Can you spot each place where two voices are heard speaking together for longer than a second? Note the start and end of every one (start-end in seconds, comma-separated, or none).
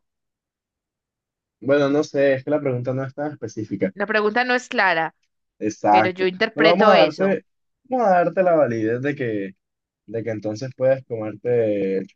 5.9-7.4